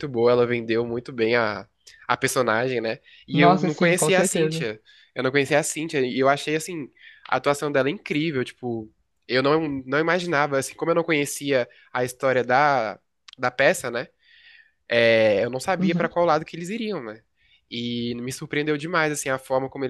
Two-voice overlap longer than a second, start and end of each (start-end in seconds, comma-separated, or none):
3.3-4.7